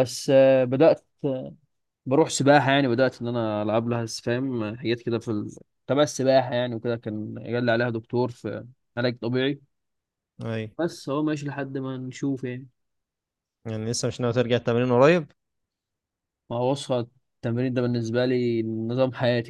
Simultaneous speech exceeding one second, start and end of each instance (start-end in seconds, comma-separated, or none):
none